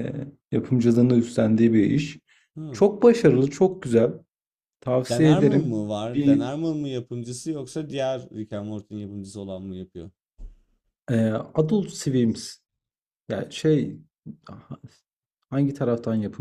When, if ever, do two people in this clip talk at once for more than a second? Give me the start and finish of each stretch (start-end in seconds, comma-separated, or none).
5.1-6.5